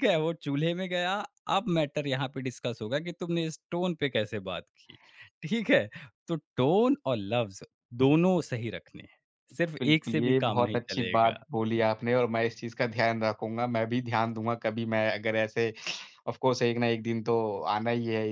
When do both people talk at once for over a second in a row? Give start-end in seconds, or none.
9.8-11.4